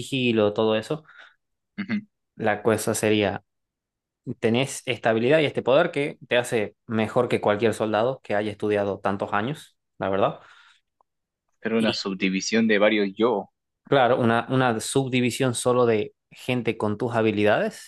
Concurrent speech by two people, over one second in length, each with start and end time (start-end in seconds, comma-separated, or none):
none